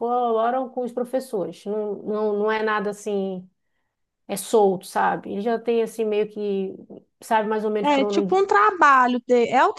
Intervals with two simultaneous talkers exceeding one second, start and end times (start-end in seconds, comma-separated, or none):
none